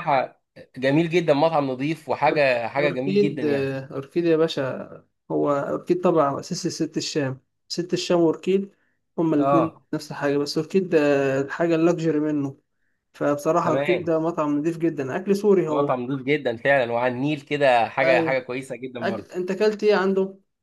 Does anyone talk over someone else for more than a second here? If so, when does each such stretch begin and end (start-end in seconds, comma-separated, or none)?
2.3-3.8